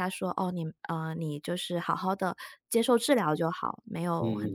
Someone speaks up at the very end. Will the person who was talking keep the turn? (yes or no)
yes